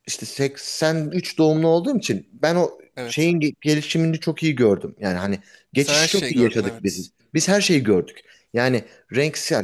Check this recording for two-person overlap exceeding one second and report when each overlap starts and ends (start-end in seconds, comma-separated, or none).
5.8-7.0